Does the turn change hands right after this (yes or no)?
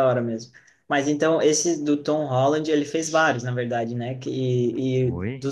no